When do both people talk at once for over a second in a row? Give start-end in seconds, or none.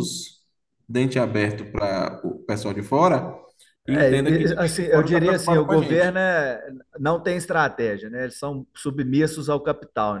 3.9-6.2